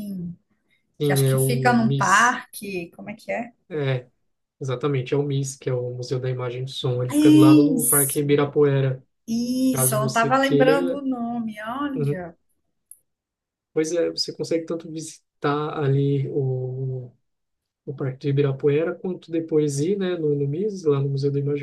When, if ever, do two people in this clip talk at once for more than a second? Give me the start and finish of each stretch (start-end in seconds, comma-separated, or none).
1.0-2.4, 7.1-8.4, 9.7-11.0